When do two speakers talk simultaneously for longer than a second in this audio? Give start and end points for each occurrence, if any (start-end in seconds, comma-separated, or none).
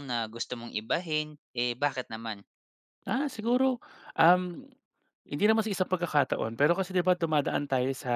none